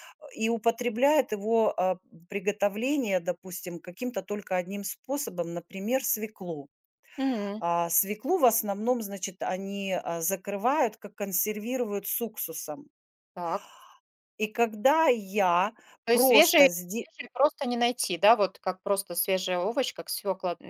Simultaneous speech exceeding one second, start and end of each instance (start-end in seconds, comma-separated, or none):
none